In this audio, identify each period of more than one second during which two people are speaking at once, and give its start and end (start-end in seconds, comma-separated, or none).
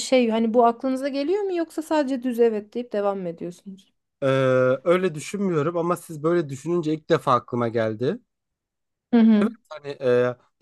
none